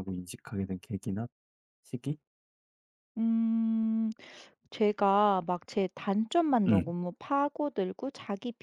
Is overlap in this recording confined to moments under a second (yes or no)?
yes